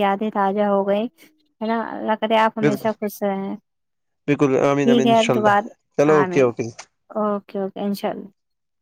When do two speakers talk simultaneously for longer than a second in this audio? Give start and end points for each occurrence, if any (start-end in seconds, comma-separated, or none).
4.3-5.6